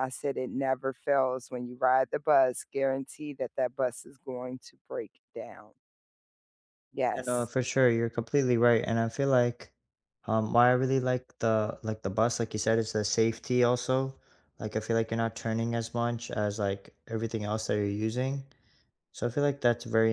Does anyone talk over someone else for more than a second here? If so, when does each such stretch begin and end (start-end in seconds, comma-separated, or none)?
none